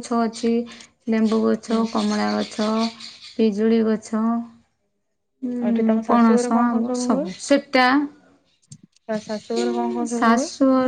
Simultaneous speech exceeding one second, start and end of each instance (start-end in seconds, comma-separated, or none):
5.6-7.2